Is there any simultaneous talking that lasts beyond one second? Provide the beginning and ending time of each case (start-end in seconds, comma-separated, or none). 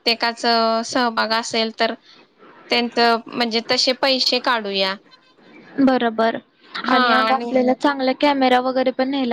none